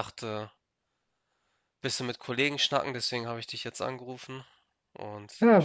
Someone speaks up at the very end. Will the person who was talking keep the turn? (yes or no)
no